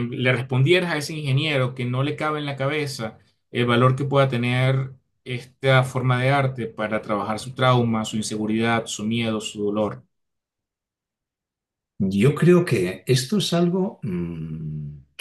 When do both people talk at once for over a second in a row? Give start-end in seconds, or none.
none